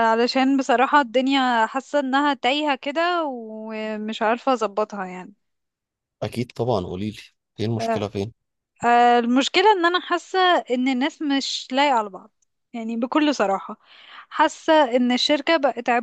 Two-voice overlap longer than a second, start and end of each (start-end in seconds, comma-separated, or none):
none